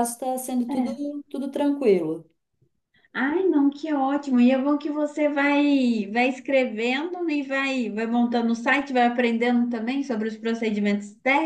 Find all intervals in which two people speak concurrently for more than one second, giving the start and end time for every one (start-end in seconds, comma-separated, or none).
none